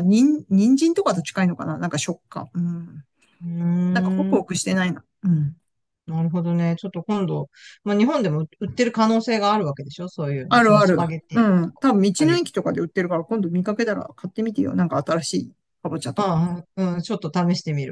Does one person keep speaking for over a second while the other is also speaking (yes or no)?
yes